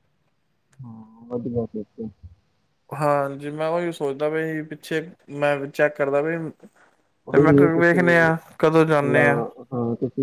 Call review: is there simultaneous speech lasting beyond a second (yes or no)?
yes